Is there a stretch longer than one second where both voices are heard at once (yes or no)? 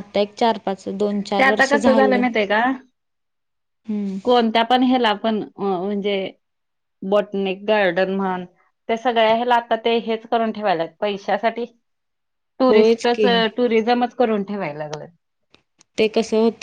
no